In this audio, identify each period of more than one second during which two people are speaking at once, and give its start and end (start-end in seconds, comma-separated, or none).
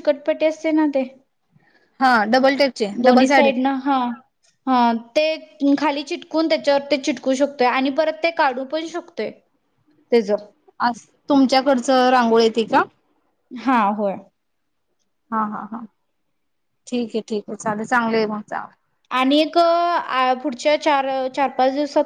none